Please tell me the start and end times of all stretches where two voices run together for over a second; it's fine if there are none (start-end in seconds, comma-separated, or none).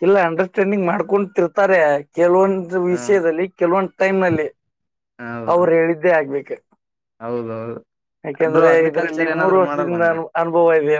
8.5-10.2